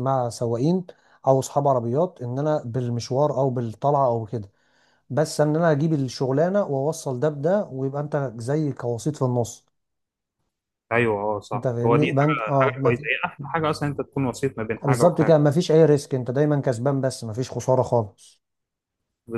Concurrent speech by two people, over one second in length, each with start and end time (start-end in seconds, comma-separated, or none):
11.5-13.1